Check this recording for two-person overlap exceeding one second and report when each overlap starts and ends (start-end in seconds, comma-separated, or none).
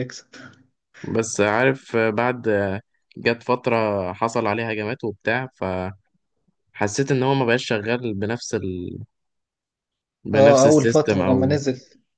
10.3-11.5